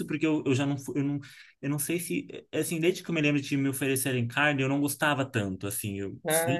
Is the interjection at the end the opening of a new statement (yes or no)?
no